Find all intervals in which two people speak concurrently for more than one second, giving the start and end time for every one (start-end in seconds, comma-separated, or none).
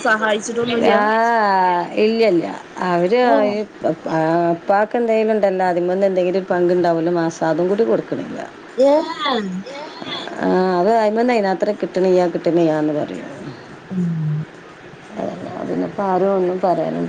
none